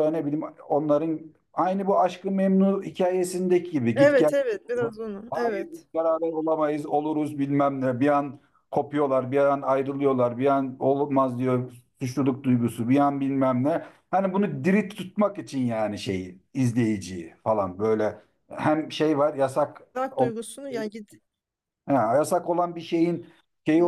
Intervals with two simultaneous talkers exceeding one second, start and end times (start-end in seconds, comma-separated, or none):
none